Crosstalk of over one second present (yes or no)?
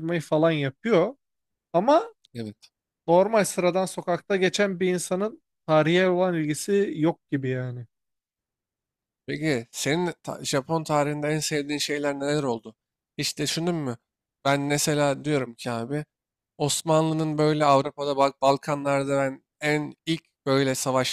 no